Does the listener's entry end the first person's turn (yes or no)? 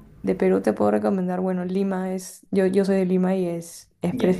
no